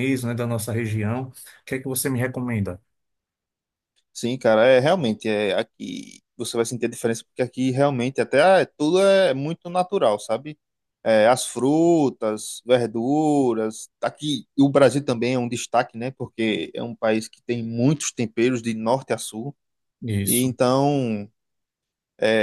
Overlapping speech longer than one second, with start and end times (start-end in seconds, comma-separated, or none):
none